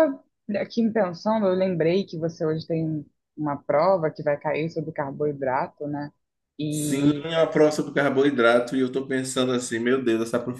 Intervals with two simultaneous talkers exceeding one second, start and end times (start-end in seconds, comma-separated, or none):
none